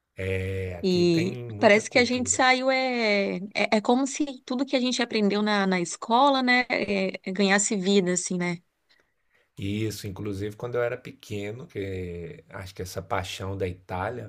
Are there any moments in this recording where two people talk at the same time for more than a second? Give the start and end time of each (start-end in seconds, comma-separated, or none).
0.8-2.4